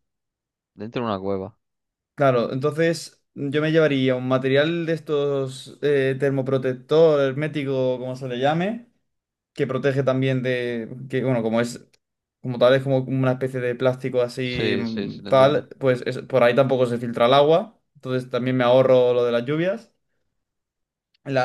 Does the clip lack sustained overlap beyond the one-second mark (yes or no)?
no